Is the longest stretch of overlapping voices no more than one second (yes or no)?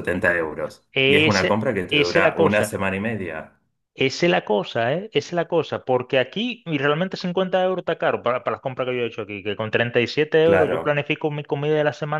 no